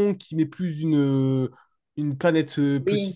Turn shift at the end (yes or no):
no